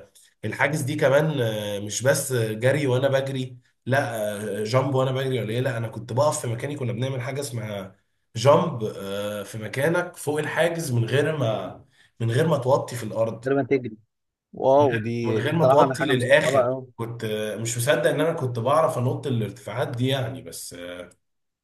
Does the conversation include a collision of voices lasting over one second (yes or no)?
yes